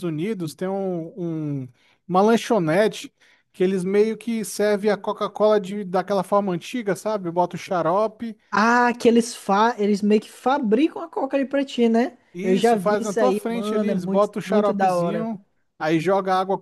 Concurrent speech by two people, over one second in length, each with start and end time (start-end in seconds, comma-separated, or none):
12.3-15.3